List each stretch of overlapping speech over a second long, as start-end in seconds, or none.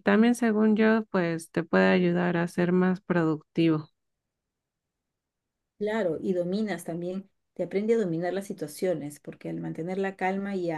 none